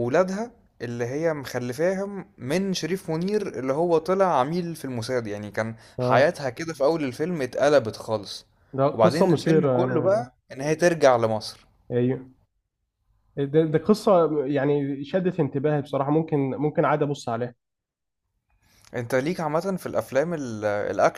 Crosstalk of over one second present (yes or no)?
yes